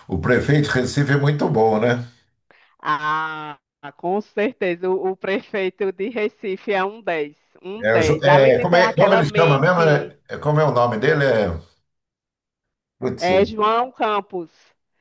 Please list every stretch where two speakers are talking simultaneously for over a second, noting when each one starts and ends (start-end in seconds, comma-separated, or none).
7.8-10.1